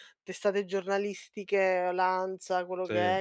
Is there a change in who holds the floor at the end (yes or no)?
no